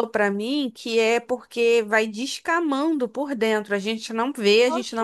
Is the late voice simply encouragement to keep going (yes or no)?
yes